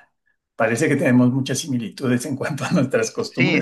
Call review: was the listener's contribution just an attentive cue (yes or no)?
no